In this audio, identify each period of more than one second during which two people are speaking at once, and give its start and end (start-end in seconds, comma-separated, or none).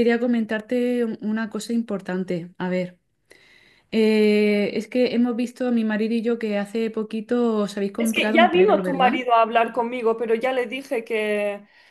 8.0-9.2